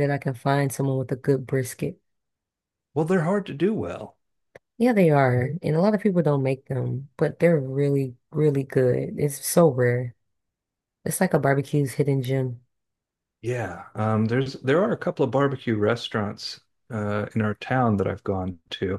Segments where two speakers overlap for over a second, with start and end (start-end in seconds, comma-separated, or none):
none